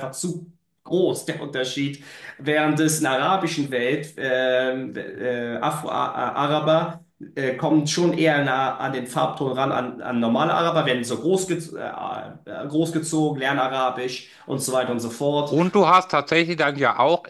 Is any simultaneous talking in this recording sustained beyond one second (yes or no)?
no